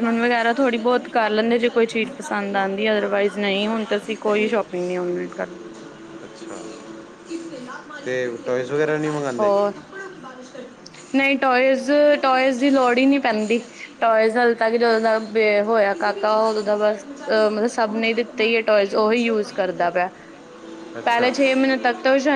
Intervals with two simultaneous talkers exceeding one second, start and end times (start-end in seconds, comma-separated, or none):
none